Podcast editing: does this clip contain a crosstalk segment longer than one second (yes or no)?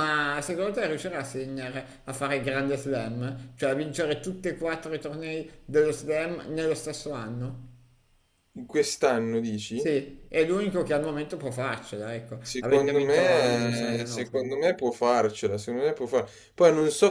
yes